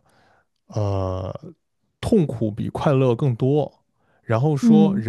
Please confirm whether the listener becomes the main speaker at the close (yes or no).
no